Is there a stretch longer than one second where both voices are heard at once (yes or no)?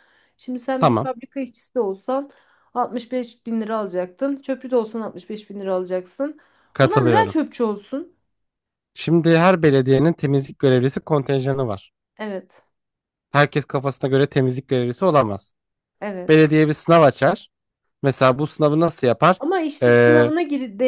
no